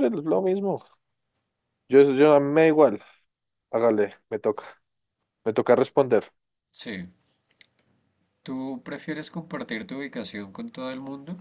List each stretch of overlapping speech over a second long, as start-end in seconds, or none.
none